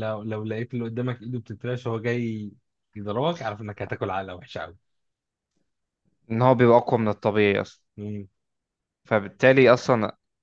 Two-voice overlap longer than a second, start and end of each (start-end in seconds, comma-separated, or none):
none